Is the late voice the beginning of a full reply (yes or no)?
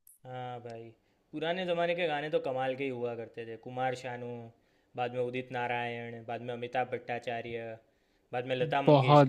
yes